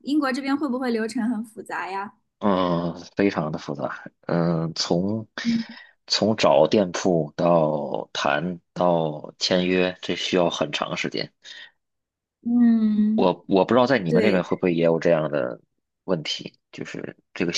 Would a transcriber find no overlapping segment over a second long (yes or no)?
yes